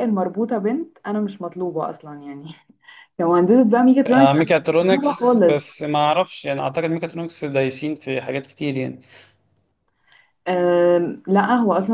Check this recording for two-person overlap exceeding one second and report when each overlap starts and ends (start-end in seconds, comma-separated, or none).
4.1-5.6